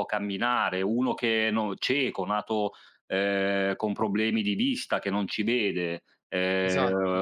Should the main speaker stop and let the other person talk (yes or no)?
no